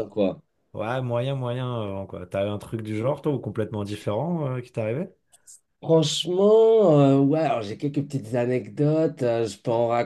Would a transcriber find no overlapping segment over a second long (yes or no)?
yes